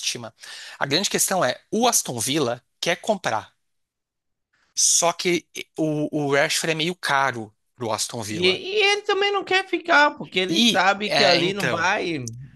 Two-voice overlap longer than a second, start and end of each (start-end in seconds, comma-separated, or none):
10.5-11.9